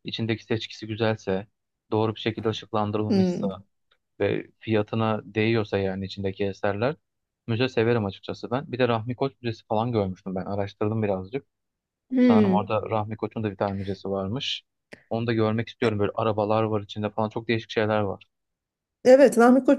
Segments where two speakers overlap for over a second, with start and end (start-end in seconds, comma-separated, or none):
none